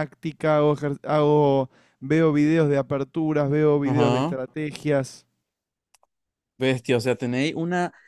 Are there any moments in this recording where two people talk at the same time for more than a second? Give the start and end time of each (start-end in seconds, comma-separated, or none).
none